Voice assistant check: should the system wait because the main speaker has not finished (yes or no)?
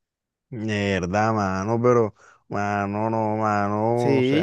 no